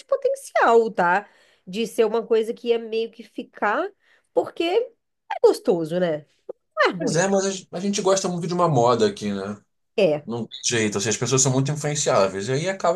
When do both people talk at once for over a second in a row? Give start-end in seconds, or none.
none